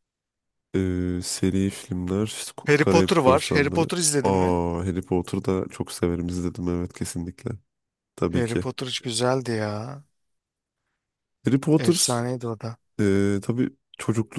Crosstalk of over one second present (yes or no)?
yes